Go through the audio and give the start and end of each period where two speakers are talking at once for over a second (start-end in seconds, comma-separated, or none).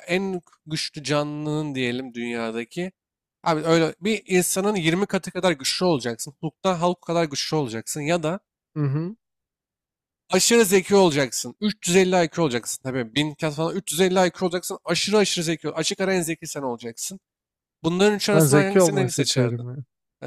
18.3-19.6